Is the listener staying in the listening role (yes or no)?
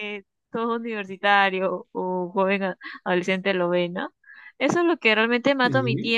yes